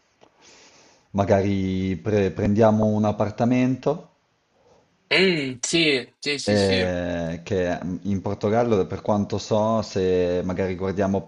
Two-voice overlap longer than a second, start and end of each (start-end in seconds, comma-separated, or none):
none